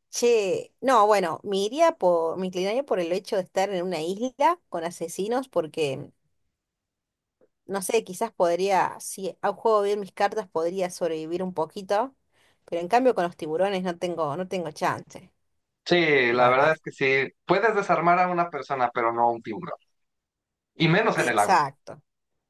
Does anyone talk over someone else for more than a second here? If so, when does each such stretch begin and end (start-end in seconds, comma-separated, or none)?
none